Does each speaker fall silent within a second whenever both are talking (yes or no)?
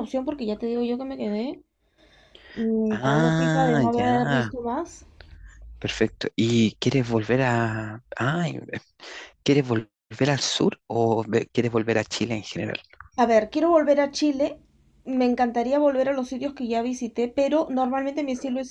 no